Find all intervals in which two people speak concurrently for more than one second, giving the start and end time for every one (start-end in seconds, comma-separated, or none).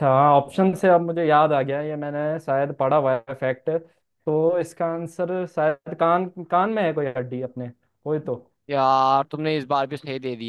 none